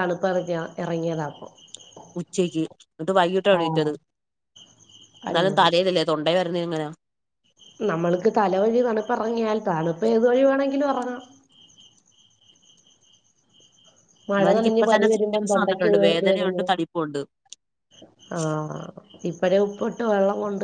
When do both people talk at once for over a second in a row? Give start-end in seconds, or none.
14.3-16.6